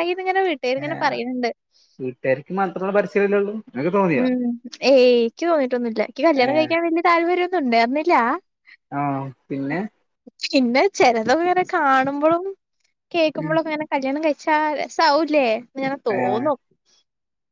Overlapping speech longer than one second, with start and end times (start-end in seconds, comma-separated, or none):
none